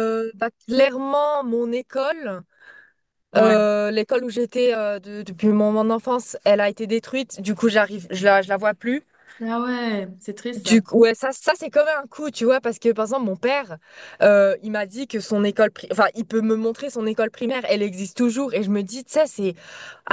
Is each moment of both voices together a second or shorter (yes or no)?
yes